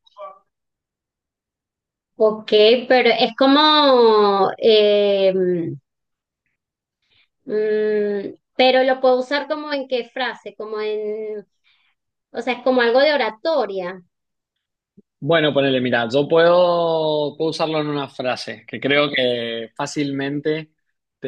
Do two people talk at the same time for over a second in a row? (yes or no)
no